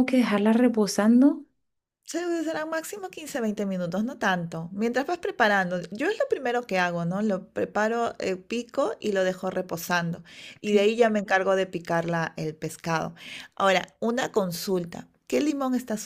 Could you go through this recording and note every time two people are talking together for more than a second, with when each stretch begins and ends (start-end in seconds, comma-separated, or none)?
none